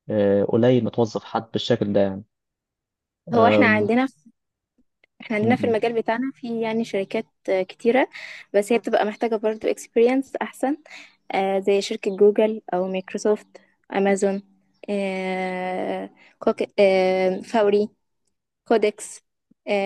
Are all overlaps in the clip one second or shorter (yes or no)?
yes